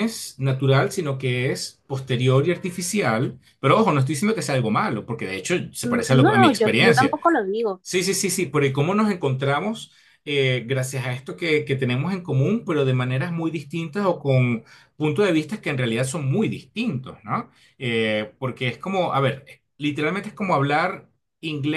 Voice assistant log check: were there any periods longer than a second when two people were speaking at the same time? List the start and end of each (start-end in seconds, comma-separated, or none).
5.8-7.2